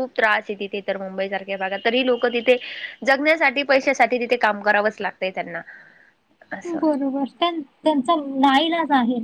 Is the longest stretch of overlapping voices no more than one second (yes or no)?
yes